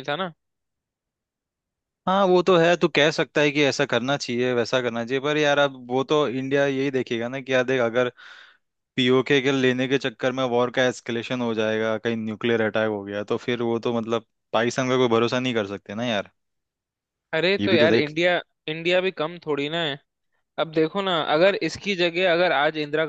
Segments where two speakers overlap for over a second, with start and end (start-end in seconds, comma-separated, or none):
none